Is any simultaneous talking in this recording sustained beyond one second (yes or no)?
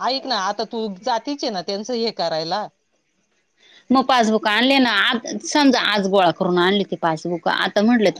no